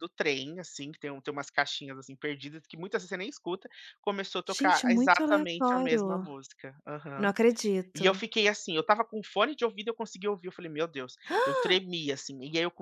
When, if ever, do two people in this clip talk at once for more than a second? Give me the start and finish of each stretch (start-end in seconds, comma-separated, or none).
4.5-6.3